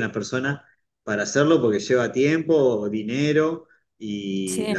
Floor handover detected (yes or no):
no